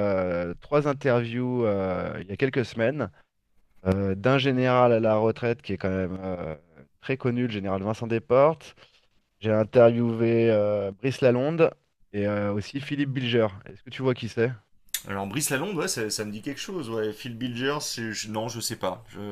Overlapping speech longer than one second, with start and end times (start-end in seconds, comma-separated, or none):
none